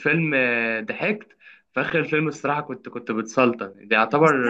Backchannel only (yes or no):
no